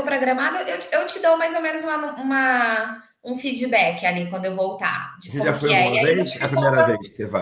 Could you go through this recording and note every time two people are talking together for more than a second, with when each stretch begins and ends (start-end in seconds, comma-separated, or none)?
5.3-6.9